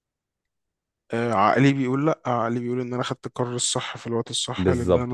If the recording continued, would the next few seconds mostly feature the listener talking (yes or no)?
yes